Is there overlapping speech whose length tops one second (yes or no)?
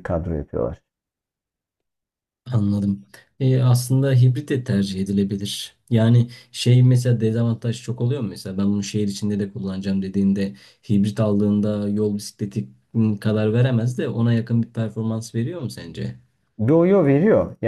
no